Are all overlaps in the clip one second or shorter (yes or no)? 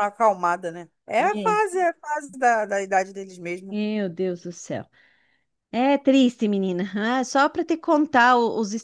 yes